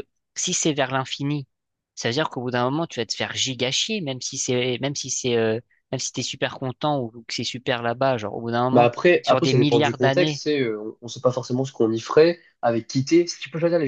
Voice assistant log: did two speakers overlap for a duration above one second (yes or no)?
yes